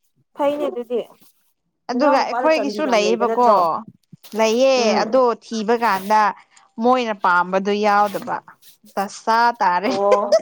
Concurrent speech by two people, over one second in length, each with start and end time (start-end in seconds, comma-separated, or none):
1.9-3.5